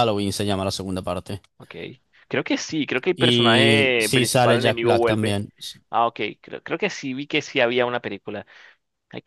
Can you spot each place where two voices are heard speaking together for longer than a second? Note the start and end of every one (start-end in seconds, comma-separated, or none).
3.1-5.4